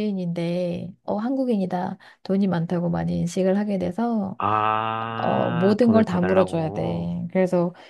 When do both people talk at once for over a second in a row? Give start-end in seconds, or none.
5.2-7.1